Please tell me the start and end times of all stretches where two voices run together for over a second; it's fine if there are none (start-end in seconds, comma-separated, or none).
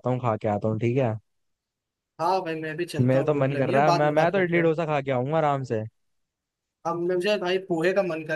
3.1-4.7